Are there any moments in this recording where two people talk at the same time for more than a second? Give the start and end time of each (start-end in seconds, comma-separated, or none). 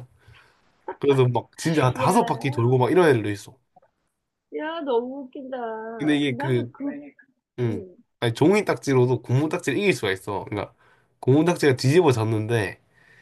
none